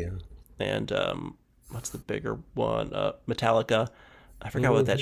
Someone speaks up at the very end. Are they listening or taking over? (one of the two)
listening